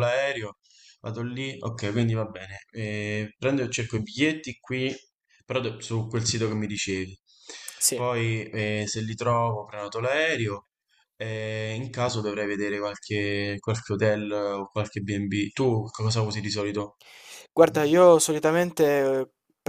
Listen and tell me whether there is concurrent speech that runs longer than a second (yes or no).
no